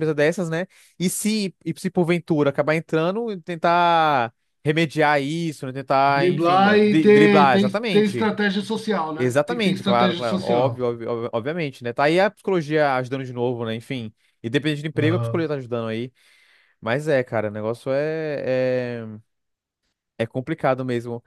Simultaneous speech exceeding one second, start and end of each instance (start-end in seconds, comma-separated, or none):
6.1-8.3, 9.2-10.8